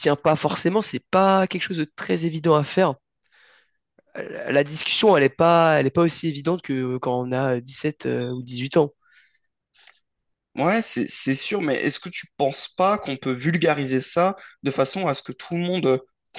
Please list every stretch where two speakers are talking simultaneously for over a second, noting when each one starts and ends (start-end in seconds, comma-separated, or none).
none